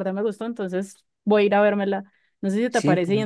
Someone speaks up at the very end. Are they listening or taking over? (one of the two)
listening